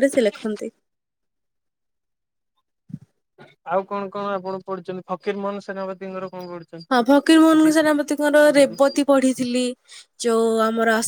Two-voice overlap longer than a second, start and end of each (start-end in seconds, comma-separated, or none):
none